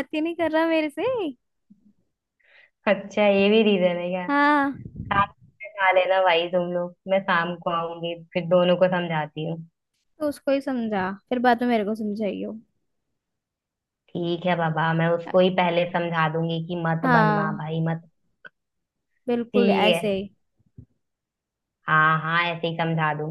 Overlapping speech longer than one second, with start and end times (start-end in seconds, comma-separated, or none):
none